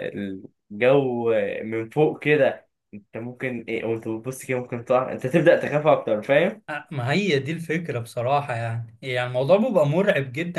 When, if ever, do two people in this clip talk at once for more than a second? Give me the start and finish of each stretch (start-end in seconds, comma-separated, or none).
none